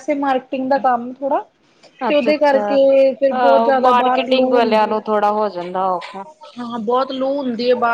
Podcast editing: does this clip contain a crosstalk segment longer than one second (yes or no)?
yes